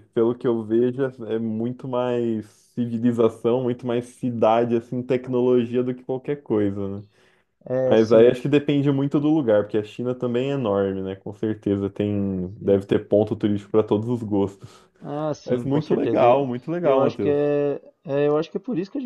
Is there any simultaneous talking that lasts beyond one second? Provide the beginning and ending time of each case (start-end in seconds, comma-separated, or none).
15.4-17.4